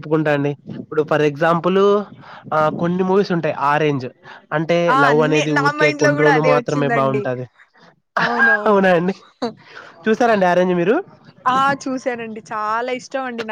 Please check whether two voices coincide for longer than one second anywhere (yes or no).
yes